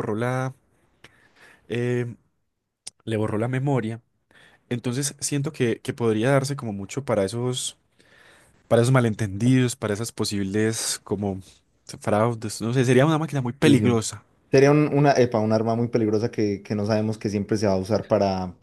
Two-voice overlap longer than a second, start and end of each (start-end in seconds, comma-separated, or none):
none